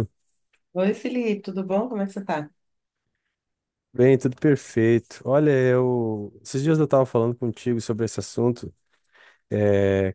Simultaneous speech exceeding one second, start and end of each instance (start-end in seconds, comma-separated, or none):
none